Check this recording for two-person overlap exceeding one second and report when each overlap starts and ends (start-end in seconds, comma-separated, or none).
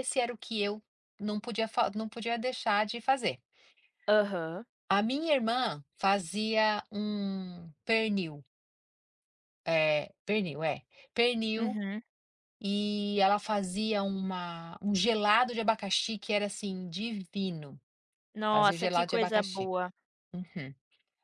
18.5-19.7